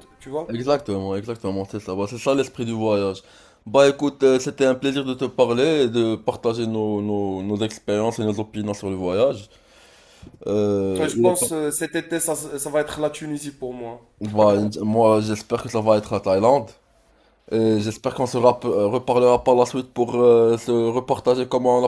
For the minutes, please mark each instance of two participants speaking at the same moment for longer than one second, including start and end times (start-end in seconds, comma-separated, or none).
none